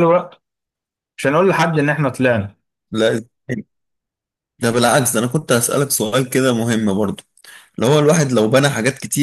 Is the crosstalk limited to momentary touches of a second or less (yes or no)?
yes